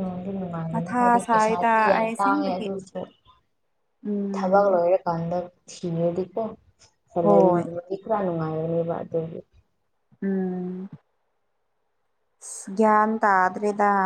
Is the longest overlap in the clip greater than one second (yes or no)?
yes